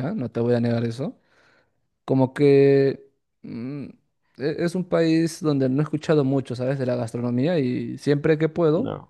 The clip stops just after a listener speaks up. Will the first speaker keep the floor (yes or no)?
yes